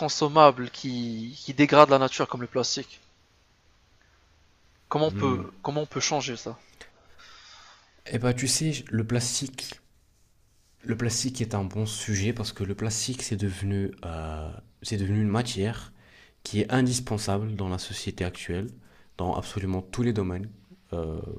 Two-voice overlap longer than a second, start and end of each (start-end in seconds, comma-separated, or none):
none